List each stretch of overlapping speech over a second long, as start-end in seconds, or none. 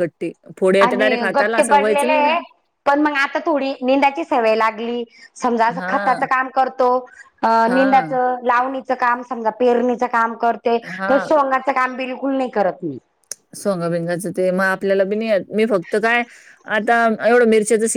0.8-2.3